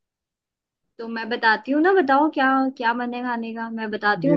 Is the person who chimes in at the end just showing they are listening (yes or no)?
no